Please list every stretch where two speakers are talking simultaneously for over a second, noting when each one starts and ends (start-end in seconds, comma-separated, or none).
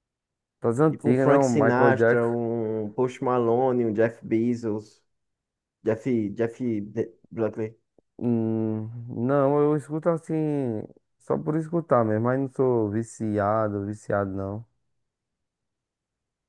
0.9-2.4